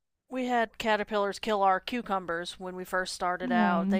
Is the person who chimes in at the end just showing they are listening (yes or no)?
yes